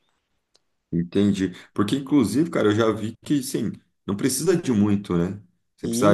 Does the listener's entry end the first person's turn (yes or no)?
no